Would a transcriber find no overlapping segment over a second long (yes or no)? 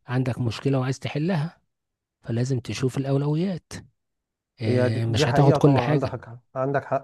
no